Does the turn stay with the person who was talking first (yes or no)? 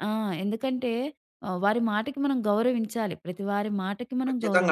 no